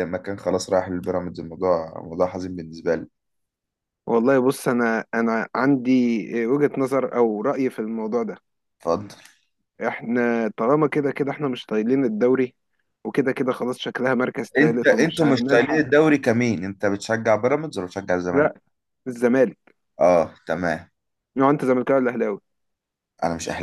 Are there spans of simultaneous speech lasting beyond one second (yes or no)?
yes